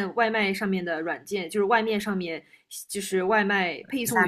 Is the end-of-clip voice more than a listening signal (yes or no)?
no